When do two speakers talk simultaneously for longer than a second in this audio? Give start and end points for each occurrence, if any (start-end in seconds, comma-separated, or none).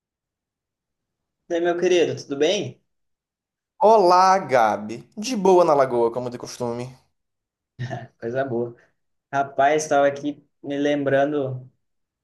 none